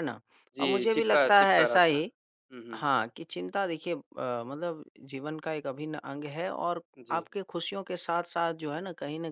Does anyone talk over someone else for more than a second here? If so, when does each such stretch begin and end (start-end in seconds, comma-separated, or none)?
0.6-2.0